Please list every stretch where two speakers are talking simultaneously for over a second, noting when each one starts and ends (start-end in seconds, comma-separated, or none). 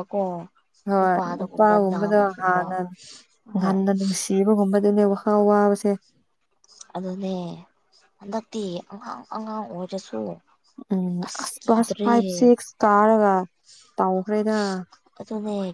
1.0-2.6